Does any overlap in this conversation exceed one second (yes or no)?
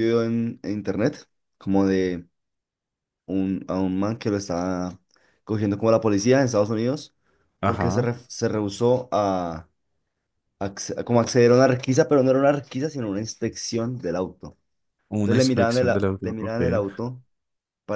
yes